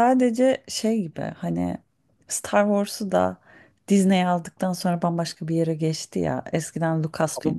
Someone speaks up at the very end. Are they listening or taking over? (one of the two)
listening